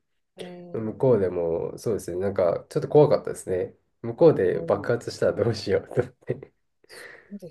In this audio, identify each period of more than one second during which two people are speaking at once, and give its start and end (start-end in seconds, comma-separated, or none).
none